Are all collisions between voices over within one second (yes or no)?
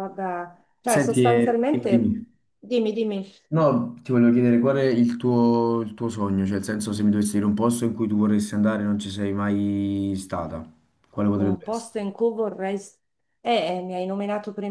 no